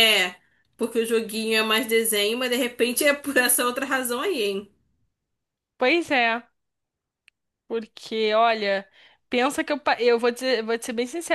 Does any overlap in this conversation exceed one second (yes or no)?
no